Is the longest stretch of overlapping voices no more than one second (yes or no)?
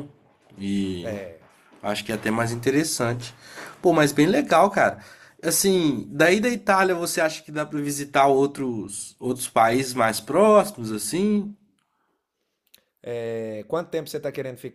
yes